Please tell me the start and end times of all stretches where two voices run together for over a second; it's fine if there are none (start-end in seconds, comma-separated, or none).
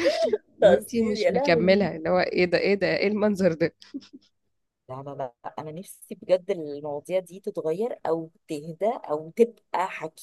0.6-1.9